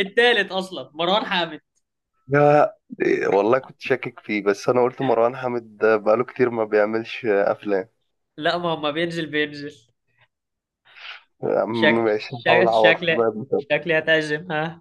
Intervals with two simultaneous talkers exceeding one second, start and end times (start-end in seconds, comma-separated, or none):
11.7-13.6